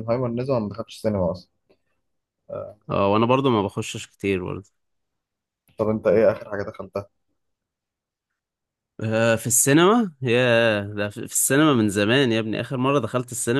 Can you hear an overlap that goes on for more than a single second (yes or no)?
no